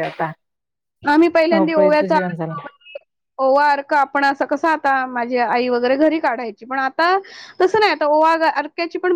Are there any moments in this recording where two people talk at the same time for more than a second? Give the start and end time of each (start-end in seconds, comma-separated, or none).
1.5-2.7